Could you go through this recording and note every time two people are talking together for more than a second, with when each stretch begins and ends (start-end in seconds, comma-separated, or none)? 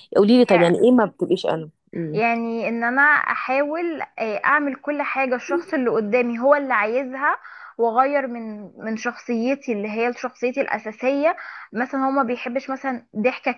none